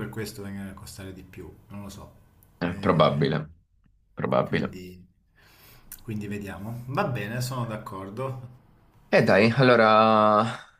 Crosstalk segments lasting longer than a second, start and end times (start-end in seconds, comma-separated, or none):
none